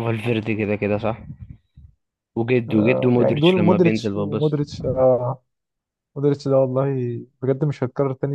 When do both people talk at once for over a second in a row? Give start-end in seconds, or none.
2.7-4.6